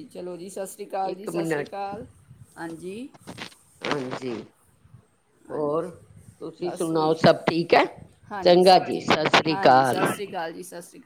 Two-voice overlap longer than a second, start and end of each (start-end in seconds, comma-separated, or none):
8.4-10.1